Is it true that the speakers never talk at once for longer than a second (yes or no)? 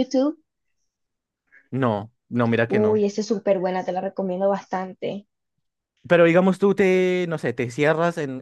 yes